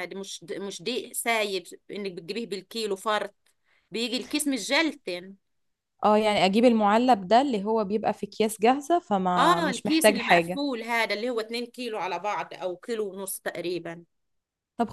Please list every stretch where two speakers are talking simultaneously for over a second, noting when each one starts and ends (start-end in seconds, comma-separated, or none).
9.4-10.6